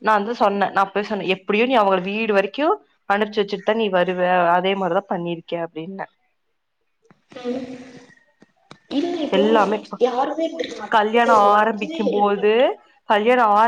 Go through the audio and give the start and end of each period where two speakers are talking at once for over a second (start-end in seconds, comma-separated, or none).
11.0-12.5